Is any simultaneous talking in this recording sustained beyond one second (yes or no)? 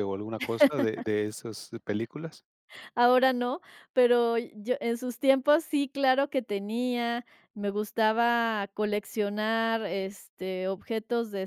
no